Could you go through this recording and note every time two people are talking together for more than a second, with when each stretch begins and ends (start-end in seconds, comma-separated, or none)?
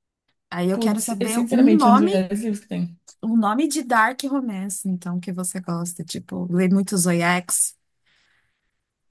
0.7-2.1